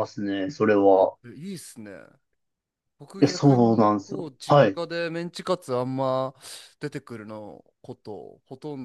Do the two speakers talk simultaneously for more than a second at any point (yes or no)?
yes